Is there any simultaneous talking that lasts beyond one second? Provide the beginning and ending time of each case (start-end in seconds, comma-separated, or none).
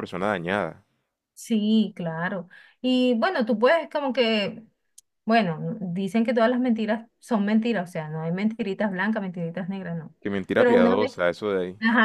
none